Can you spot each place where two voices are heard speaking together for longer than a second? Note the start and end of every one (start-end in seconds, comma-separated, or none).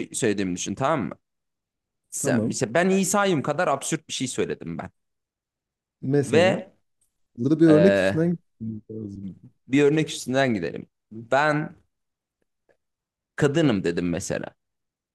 none